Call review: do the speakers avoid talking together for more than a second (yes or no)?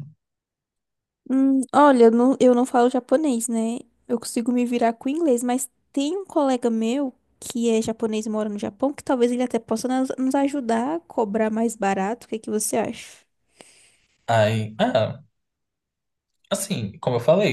yes